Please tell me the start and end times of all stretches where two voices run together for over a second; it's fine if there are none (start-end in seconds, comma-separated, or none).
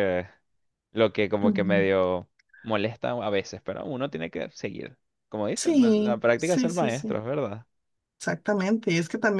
5.5-7.2